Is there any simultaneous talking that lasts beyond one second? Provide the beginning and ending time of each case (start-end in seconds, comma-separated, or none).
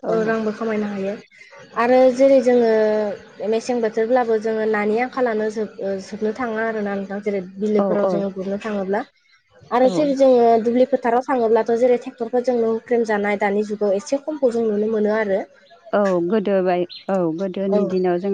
none